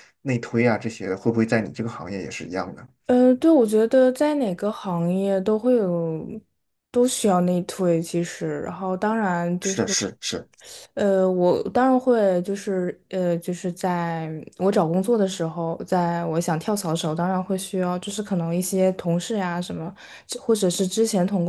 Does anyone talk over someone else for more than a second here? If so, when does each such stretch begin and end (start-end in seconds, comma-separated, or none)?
none